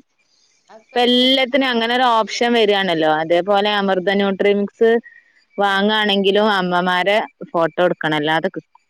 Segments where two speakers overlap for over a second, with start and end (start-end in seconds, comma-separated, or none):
0.9-2.5